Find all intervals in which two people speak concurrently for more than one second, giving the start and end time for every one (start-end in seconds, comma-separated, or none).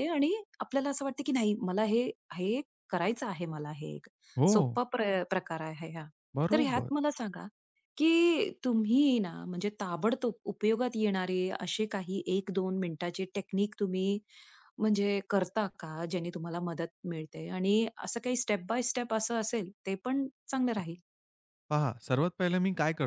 none